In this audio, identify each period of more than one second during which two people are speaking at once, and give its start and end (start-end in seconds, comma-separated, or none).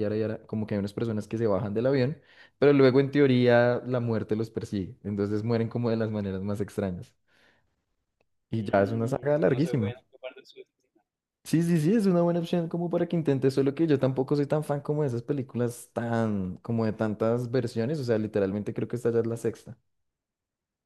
8.5-9.9